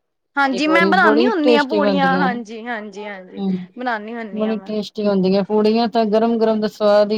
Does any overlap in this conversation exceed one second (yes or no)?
yes